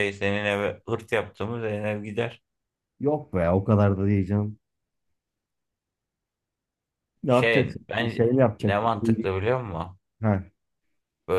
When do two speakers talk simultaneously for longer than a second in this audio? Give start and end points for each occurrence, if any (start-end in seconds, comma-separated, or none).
7.3-9.3